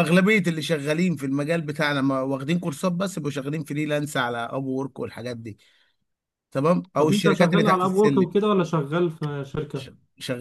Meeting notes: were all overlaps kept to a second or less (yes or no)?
no